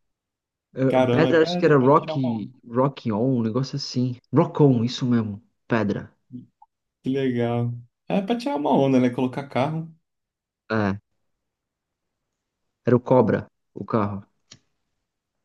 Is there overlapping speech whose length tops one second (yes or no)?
yes